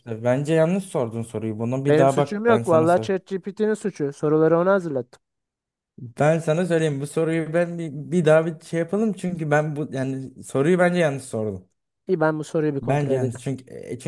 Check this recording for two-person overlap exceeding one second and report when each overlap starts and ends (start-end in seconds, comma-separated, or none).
1.9-3.1